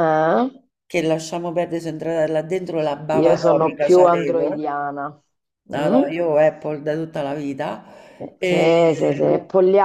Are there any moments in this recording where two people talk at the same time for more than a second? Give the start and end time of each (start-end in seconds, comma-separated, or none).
3.1-4.7